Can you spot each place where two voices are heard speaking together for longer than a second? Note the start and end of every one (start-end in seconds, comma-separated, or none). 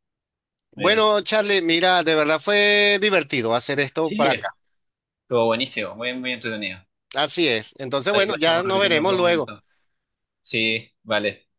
8.1-9.5